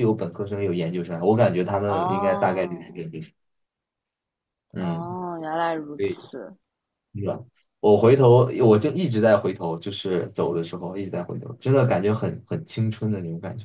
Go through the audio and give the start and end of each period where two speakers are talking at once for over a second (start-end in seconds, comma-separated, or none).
1.8-3.1